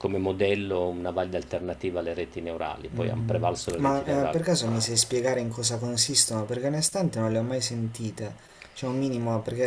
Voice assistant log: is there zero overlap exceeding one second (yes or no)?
no